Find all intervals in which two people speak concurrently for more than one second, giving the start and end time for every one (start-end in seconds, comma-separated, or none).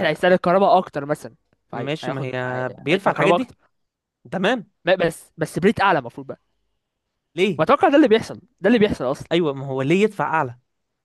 1.7-3.5